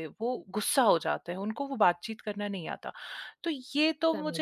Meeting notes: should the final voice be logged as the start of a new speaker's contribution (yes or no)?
no